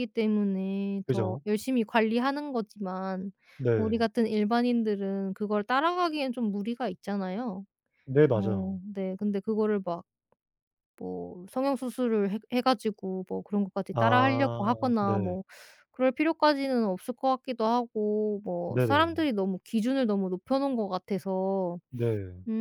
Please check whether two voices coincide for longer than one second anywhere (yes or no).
yes